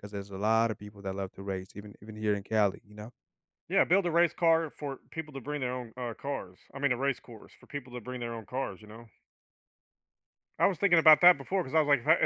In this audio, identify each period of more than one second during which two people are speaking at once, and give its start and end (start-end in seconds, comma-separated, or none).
none